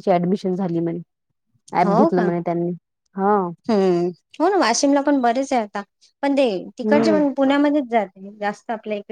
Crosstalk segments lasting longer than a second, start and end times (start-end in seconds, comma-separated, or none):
none